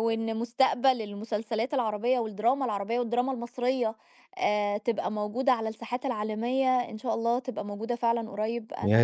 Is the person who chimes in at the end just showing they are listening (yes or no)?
no